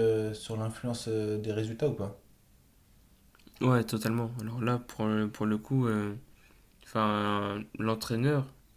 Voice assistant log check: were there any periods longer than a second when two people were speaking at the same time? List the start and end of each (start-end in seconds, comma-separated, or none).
none